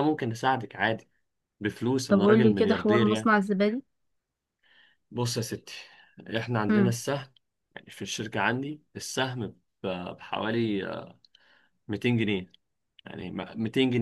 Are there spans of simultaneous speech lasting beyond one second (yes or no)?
yes